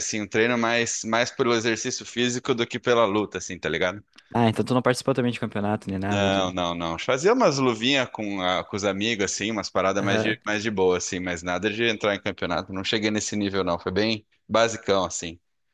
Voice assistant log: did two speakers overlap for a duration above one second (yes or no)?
no